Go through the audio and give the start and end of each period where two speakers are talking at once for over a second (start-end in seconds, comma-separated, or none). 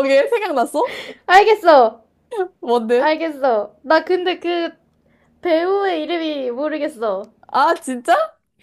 none